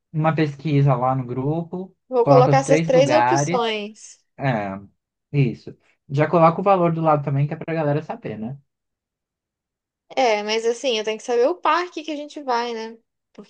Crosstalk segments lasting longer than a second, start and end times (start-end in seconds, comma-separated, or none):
2.1-3.8